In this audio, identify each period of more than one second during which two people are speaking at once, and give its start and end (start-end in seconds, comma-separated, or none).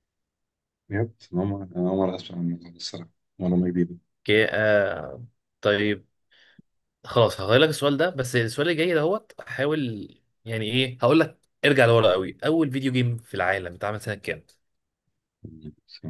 none